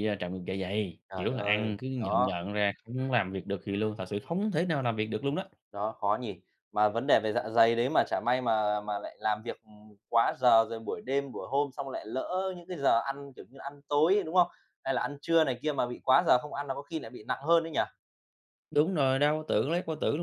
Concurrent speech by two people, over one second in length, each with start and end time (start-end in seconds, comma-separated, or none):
1.1-2.4